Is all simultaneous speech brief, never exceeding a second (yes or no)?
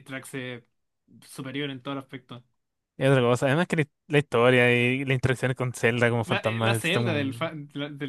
no